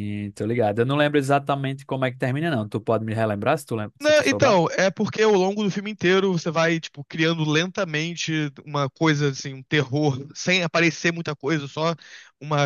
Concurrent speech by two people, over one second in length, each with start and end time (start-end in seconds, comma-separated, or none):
none